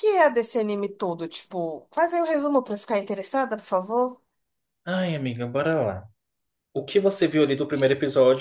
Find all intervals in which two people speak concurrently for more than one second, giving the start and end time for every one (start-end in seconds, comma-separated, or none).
none